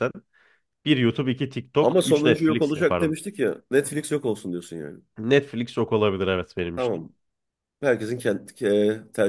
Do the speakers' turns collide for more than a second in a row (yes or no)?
yes